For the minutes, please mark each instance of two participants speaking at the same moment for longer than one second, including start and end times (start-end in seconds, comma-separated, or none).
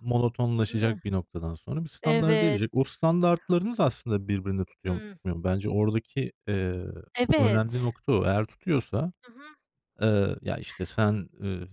none